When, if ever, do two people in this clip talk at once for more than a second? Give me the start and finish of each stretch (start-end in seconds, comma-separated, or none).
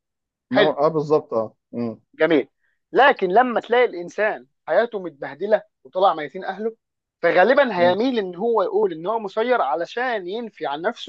none